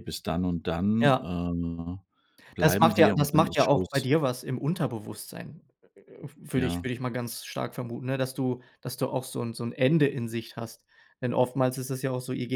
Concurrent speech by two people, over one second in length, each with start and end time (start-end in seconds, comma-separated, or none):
2.6-4.0